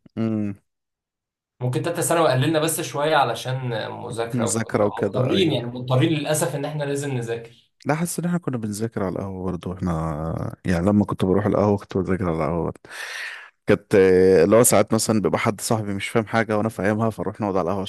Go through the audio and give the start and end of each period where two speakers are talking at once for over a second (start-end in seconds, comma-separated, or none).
4.3-5.6